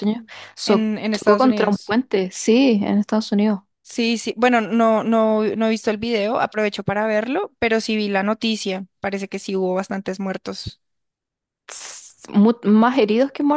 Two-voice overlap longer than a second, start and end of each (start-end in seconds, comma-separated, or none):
0.7-1.9